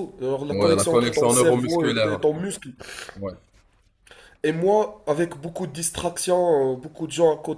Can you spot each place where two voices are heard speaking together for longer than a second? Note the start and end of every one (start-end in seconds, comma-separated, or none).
0.5-2.2